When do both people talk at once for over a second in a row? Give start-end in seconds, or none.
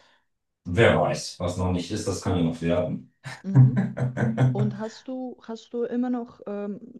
none